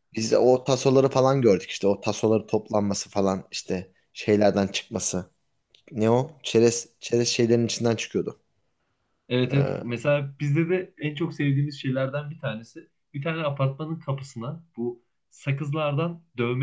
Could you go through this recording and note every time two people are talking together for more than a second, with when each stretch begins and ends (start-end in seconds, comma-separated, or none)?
none